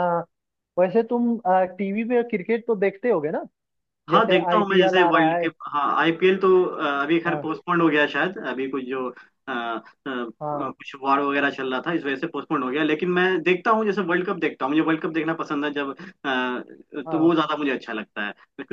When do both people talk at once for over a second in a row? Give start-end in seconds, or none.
4.1-5.5